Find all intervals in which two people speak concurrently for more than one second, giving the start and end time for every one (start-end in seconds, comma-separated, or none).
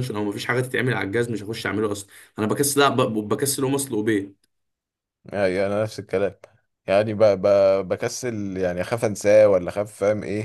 none